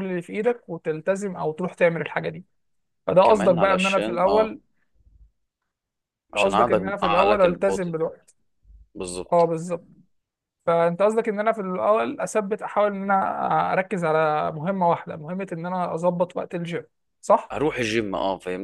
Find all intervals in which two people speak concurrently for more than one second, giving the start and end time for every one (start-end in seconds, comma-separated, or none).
3.2-4.5, 6.3-8.2